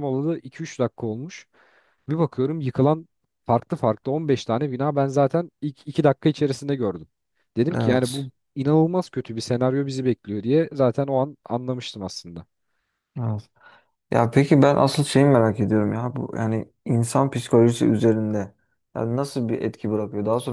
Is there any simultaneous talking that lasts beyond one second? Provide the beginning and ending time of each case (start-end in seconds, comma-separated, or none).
none